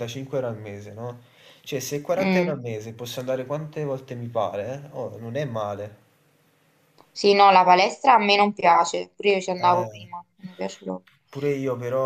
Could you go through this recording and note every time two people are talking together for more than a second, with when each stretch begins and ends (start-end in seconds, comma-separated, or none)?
none